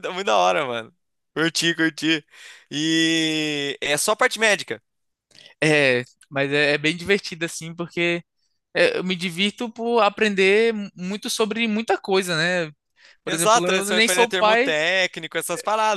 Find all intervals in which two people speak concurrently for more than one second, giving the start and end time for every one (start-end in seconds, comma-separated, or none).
13.2-14.7